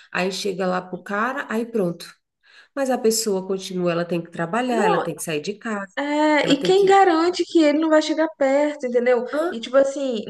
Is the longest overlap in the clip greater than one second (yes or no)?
no